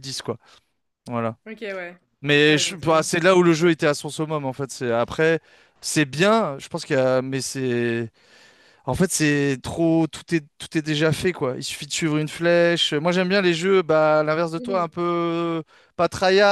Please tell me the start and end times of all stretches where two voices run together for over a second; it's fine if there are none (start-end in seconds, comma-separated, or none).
2.5-3.7